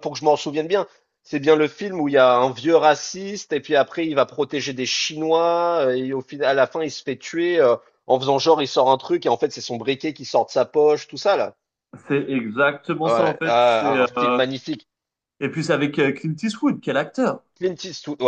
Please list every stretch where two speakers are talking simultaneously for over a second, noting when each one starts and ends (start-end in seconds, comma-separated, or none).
13.0-14.4